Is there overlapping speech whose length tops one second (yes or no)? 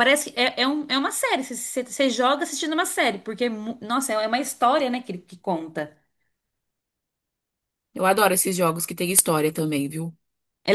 no